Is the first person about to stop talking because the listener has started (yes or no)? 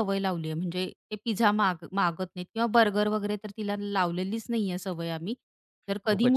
no